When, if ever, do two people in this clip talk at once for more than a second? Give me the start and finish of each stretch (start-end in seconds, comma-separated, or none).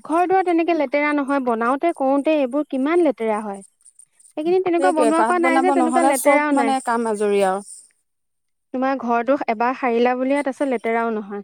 4.8-6.8